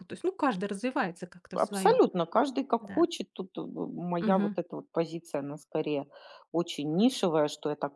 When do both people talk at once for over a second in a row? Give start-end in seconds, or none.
none